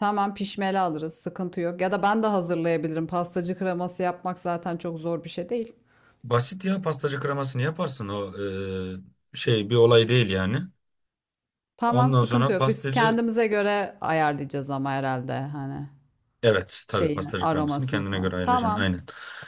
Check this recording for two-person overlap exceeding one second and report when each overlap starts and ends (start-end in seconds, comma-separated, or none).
11.9-13.2, 16.9-18.9